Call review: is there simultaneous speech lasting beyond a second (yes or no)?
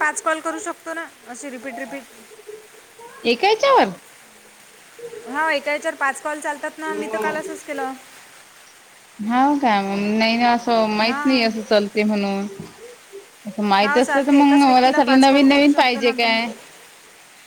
yes